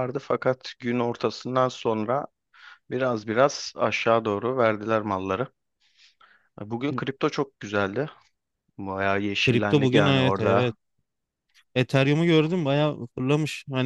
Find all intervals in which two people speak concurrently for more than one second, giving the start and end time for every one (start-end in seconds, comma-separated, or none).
9.4-10.7